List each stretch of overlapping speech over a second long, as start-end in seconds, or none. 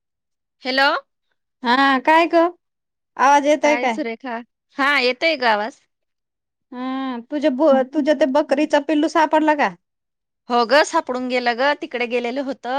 none